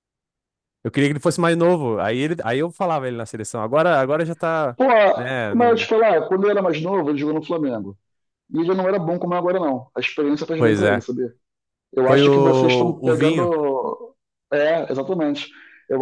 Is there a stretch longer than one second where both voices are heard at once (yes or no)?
yes